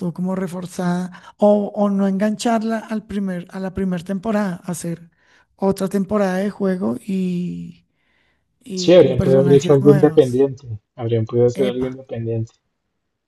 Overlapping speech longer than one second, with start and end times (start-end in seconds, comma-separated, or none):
8.8-10.4